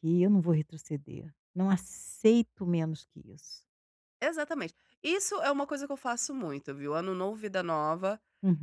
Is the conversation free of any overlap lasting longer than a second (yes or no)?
yes